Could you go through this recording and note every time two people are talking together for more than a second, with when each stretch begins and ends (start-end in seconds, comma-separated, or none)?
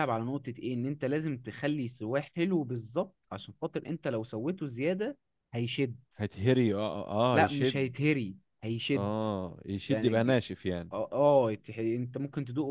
none